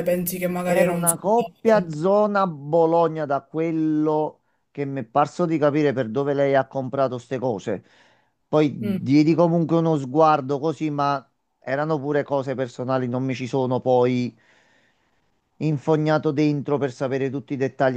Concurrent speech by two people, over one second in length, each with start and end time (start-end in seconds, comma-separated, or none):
0.6-2.1